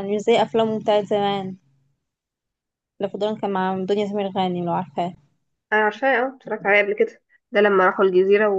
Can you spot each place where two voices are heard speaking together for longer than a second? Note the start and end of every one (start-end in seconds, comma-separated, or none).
none